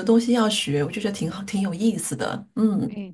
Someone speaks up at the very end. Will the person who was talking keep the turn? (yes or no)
no